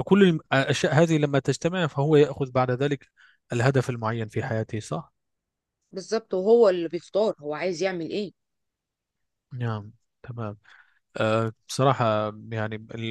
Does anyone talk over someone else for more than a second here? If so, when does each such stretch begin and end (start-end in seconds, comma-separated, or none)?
none